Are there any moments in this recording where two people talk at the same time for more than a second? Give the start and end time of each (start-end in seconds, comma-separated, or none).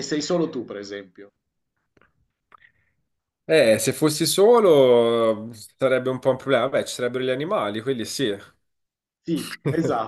none